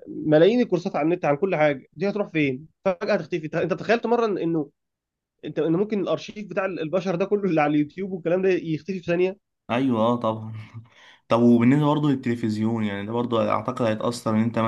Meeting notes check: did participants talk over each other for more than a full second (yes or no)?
no